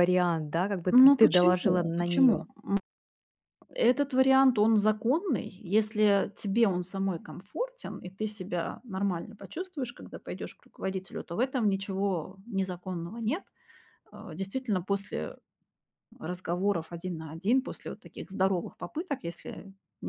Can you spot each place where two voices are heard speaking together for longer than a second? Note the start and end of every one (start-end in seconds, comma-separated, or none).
0.9-2.5